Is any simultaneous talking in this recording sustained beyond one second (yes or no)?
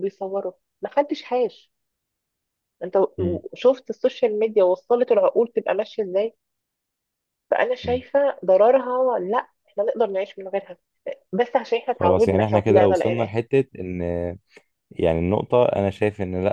yes